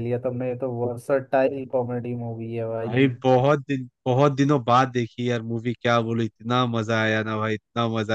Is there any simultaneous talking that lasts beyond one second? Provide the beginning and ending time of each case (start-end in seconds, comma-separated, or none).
none